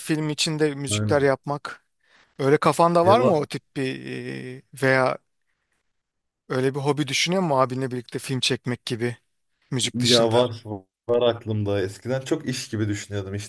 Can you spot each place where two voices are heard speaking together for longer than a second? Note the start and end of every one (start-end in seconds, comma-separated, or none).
none